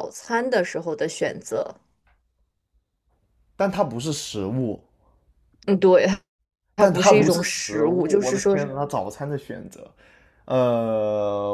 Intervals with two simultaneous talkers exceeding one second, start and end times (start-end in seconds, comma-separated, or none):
6.8-8.7